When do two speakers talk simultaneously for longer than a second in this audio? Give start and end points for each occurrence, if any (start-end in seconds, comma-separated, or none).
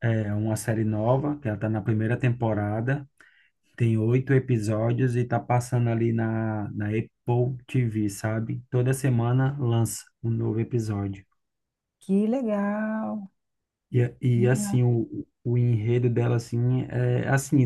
none